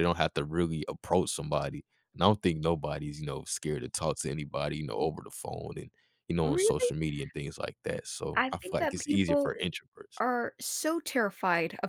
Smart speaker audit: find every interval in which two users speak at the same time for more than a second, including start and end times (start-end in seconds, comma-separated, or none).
8.3-9.5